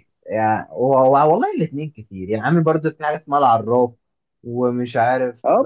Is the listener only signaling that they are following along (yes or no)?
no